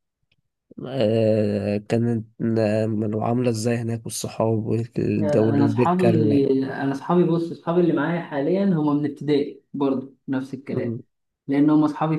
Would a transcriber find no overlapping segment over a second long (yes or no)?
no